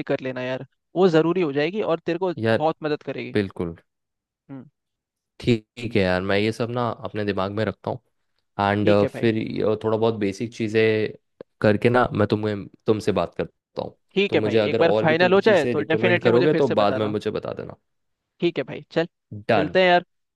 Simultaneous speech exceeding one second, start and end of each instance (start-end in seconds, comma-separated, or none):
14.2-17.1